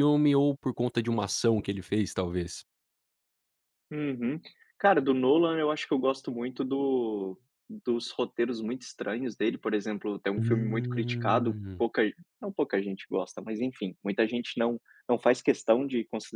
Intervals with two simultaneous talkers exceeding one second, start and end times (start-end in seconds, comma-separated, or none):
10.4-11.8